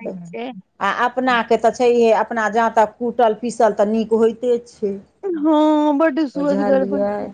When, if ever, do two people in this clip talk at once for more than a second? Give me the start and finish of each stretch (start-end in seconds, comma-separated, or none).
none